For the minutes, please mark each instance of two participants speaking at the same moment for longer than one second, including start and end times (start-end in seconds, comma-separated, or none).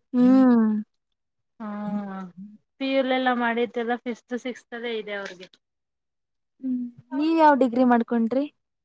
none